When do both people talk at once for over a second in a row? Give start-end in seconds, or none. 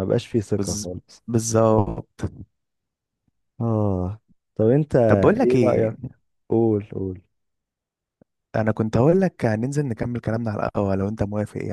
none